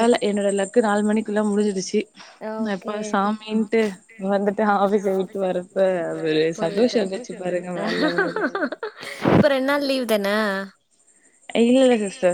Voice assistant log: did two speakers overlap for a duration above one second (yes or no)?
no